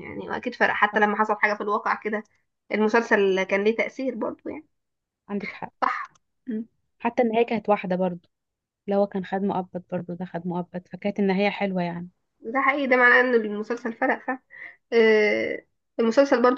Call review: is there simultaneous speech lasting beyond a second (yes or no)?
no